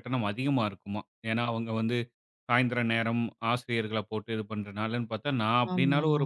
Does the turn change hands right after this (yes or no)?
no